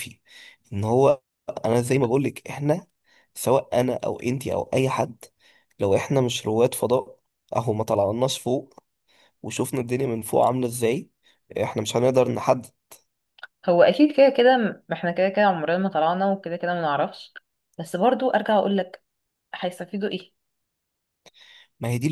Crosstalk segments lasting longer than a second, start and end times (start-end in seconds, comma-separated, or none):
none